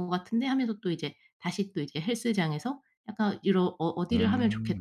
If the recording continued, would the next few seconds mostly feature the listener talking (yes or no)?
no